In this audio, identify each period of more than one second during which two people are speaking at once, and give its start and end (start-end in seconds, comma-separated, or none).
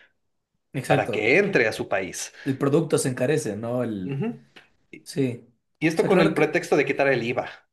none